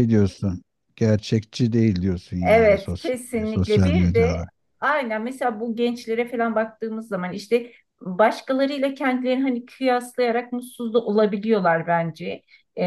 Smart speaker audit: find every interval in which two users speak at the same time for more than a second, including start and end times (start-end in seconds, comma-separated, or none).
2.4-4.4